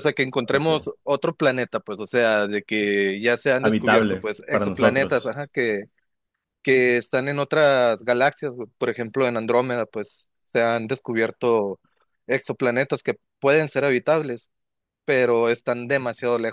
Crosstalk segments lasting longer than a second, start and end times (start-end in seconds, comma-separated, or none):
3.6-5.3